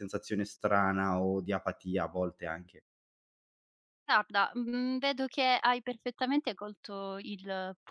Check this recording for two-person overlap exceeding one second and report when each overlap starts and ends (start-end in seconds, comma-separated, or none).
none